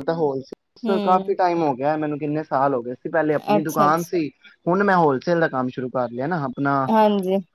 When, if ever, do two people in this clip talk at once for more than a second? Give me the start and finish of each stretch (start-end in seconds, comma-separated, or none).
none